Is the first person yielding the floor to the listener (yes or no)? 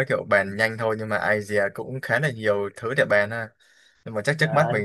no